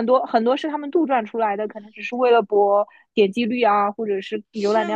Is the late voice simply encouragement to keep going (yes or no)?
no